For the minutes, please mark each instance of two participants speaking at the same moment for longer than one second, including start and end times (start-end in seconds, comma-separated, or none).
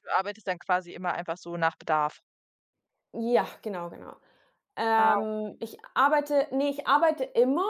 none